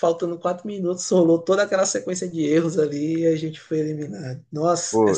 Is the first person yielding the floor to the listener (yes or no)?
yes